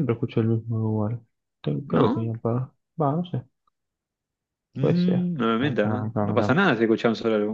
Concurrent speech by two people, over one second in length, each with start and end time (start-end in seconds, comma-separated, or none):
none